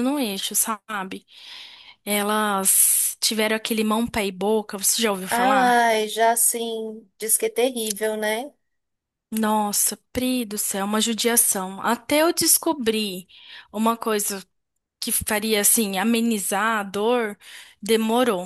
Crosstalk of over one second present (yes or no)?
no